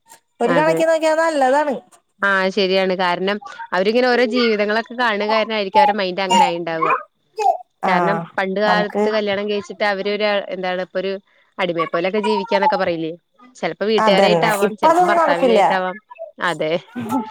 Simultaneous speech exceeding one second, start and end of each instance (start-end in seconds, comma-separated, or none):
14.1-15.6